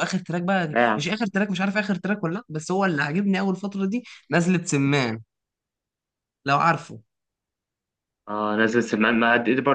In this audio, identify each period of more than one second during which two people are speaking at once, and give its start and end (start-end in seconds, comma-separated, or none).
none